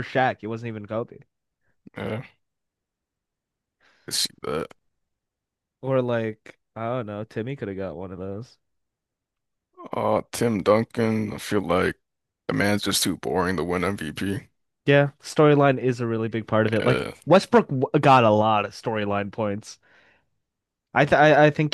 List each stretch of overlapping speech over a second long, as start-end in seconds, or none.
none